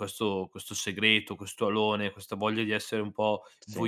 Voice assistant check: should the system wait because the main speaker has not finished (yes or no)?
yes